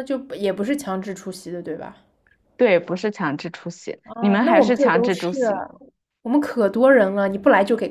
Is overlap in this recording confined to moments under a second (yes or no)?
no